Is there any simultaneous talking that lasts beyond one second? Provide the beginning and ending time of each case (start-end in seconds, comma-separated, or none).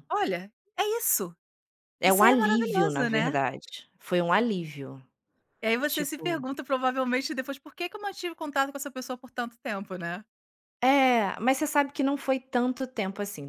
2.0-3.4